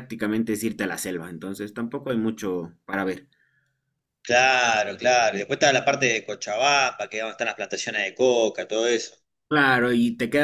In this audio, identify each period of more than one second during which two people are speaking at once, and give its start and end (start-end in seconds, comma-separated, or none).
none